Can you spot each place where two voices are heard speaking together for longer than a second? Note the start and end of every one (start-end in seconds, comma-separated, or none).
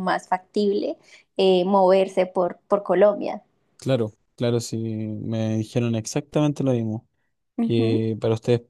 none